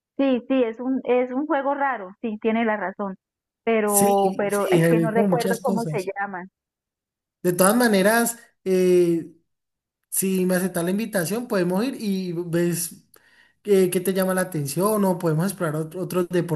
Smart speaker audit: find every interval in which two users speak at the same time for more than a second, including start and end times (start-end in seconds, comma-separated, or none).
3.9-6.1